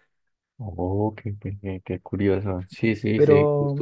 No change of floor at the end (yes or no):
yes